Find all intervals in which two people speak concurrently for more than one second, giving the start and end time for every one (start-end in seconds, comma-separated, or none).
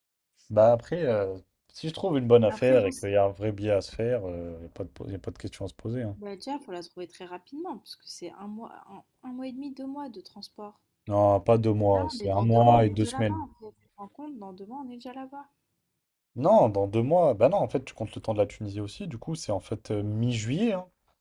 11.9-13.4